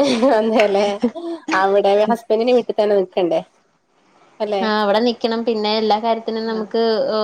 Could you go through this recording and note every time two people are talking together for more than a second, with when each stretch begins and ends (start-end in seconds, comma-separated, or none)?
none